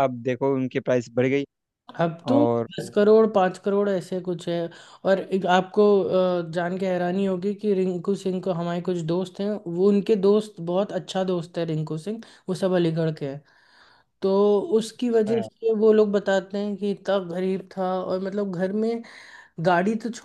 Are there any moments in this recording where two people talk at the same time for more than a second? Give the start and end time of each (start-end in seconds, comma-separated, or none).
none